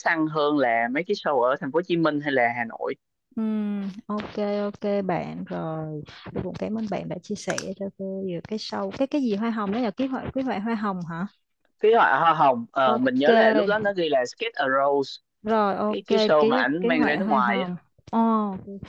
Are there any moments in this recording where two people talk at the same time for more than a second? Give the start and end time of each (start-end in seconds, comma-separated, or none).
15.9-17.7